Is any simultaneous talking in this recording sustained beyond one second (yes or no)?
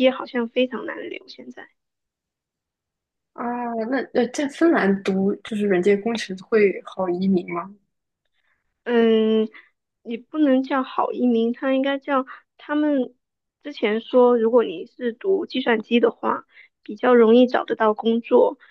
no